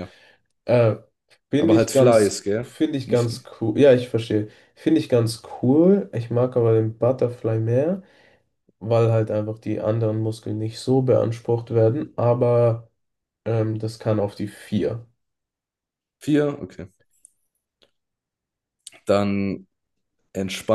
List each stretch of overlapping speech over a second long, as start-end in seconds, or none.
1.6-3.5